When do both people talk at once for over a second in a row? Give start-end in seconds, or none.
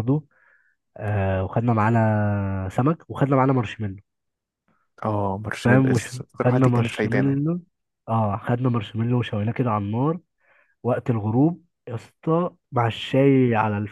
5.6-7.4